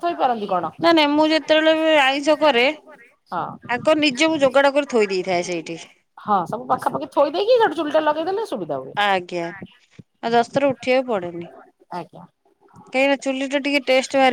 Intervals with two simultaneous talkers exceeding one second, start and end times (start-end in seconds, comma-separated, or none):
none